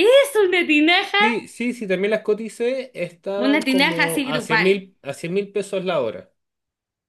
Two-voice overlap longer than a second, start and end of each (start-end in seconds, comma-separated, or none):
3.4-4.8